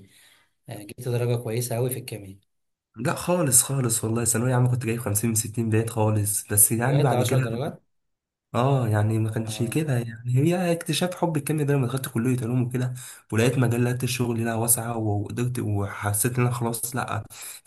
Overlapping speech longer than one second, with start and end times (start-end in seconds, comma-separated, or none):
none